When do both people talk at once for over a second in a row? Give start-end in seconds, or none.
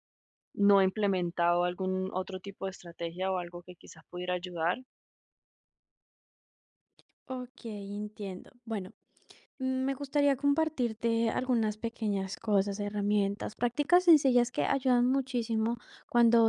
none